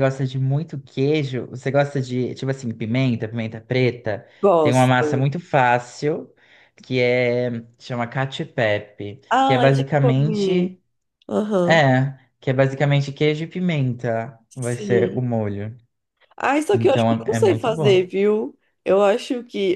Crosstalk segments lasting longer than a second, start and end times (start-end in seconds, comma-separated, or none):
9.3-10.7, 16.7-18.1